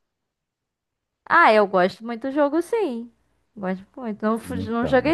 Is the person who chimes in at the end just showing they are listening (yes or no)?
yes